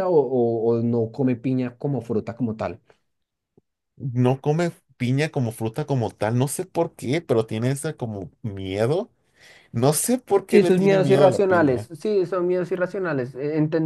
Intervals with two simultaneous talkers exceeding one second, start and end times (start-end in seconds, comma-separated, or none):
10.5-11.9